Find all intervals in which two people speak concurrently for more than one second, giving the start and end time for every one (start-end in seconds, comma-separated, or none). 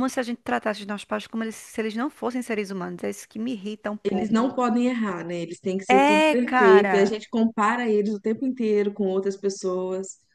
5.9-7.2